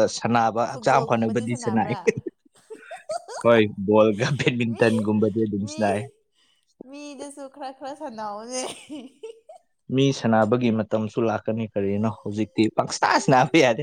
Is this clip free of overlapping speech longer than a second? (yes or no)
no